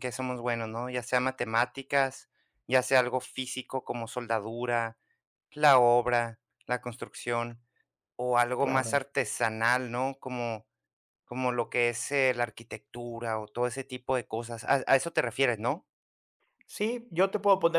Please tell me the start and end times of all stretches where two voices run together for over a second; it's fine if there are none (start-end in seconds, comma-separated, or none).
none